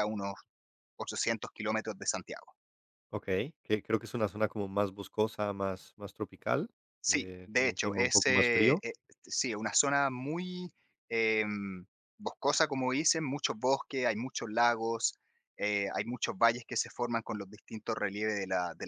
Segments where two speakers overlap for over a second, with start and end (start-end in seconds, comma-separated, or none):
7.1-8.8